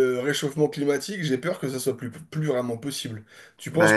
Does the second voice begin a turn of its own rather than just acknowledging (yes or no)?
yes